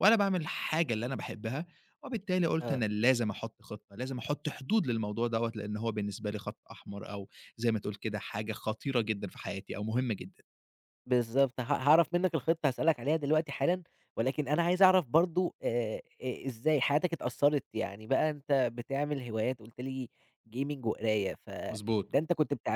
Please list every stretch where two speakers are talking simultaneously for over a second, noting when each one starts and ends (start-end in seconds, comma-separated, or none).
none